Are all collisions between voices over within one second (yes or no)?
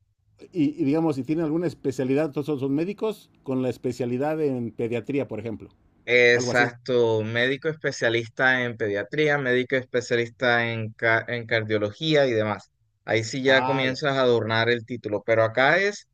yes